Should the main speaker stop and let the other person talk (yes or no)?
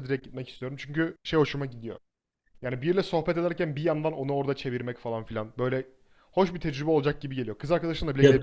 yes